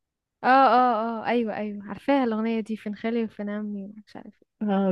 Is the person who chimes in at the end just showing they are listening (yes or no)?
no